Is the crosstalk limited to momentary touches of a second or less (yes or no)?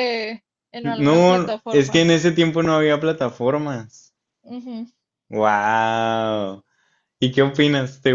no